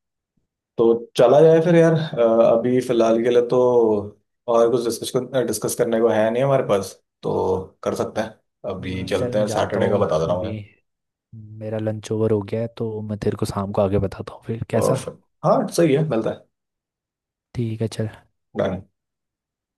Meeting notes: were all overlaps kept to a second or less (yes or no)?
no